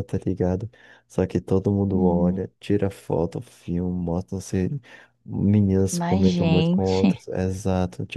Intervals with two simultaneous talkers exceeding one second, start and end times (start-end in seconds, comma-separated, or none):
5.9-7.1